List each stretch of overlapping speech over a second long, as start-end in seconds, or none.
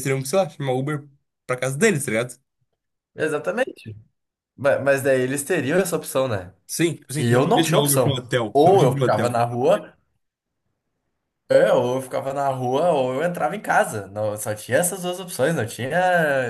7.2-9.4